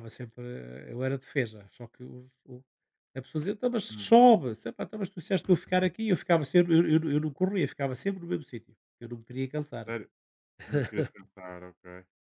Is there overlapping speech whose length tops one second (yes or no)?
no